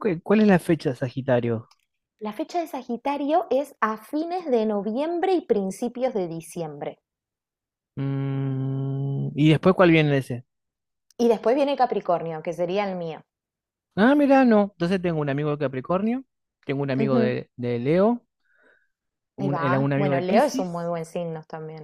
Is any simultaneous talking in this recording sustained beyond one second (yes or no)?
yes